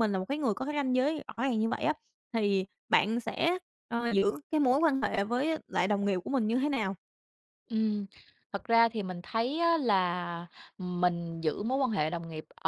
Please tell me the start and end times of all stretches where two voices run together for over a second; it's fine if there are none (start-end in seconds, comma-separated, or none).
none